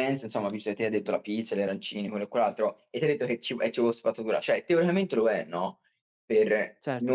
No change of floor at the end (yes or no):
yes